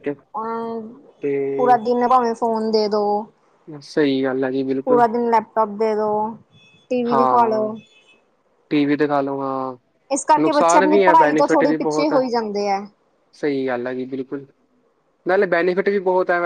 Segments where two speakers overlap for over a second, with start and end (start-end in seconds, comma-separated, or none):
10.4-12.2